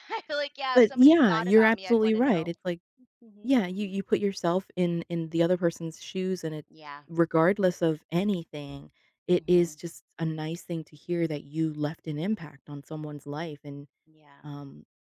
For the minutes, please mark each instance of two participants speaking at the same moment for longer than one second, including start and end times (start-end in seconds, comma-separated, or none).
0.7-2.5